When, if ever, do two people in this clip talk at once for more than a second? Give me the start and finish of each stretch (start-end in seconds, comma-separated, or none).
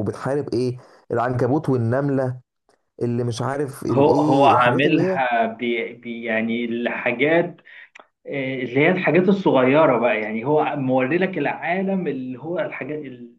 3.9-5.2